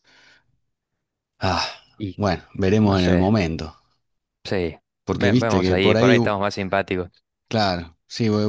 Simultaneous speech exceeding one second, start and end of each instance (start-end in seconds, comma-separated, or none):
5.0-6.3